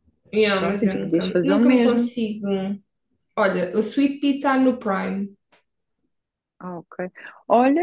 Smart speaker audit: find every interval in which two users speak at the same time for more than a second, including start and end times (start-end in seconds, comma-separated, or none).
0.5-2.1